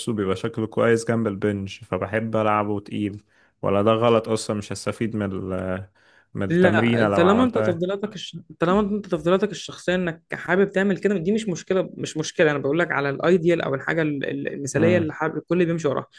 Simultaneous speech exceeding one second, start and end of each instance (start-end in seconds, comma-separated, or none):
6.5-7.9